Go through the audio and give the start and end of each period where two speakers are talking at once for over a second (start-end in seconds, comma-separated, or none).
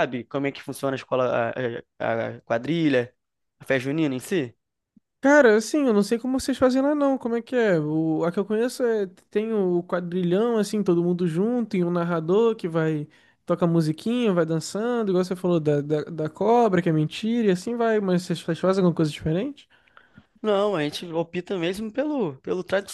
none